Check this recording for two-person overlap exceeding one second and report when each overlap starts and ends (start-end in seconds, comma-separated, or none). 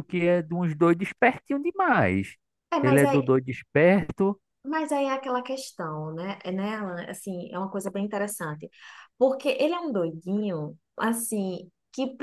none